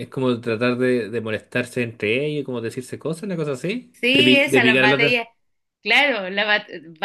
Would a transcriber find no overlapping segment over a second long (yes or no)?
no